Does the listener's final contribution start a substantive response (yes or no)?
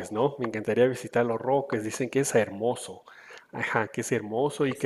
no